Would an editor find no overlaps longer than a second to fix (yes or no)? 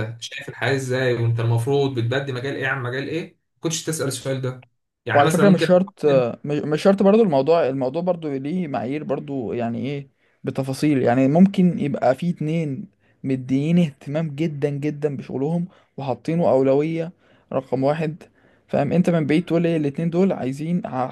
yes